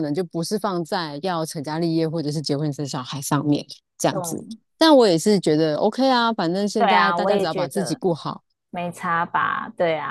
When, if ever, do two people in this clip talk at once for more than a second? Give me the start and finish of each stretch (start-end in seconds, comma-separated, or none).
6.8-8.0